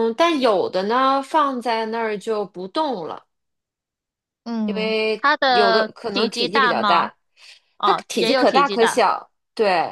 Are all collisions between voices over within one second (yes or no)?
no